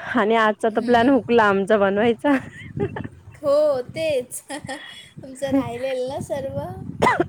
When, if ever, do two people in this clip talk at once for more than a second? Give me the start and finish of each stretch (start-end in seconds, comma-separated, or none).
none